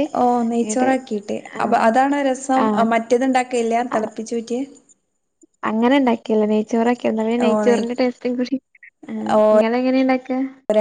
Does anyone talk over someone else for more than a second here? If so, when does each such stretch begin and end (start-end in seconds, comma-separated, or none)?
none